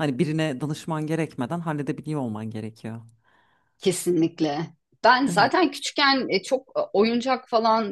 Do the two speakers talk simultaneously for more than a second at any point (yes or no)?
no